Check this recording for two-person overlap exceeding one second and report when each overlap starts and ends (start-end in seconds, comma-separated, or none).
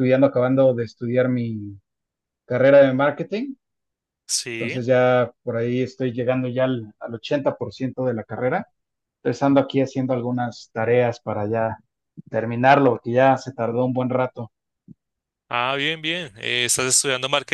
none